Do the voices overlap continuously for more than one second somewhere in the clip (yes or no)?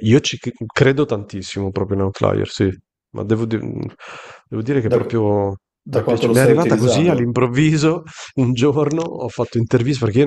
yes